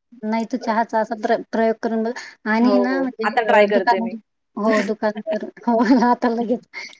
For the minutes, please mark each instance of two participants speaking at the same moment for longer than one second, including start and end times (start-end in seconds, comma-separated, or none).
none